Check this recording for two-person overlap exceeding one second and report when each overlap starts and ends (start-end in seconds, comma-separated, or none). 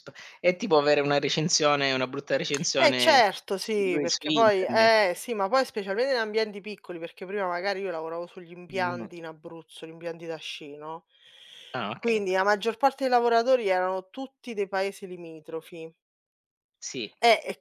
2.8-5.0